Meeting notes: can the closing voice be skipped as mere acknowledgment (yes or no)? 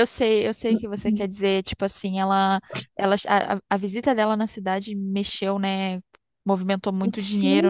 no